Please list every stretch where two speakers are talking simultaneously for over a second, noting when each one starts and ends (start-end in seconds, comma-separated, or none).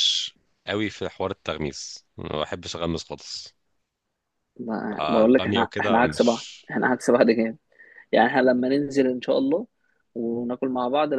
5.0-6.7